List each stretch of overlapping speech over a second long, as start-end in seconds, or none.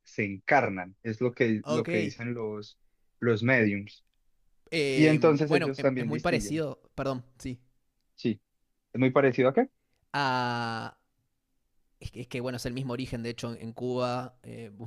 4.9-6.6